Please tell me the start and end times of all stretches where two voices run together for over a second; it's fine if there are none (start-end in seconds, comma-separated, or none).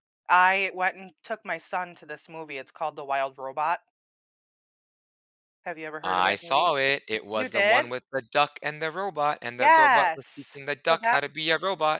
9.6-11.2